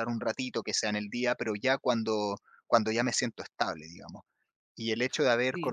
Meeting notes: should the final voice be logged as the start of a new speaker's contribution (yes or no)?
no